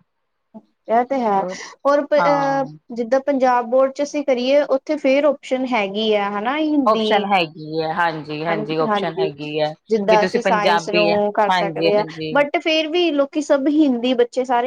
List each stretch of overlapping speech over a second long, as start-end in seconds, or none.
10.1-12.3